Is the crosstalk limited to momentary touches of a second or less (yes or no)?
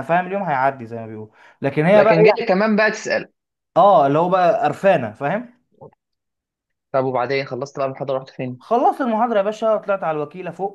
yes